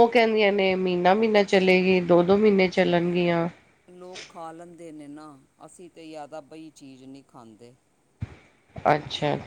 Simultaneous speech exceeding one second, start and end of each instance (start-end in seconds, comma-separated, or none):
none